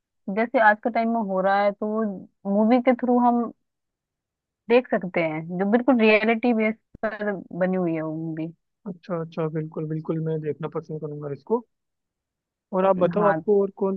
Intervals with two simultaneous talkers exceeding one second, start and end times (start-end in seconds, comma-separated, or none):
none